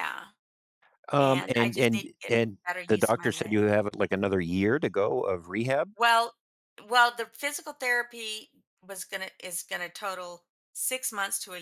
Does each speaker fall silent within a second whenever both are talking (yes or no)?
no